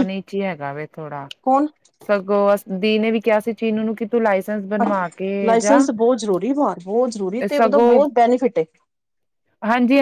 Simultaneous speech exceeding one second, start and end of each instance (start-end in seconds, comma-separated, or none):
none